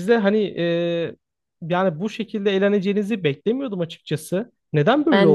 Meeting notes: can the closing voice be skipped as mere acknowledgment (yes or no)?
no